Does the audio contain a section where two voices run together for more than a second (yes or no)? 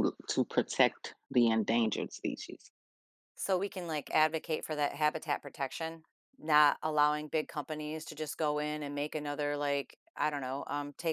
no